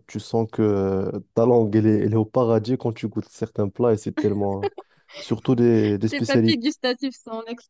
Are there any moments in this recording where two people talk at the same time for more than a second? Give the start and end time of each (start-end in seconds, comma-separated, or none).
none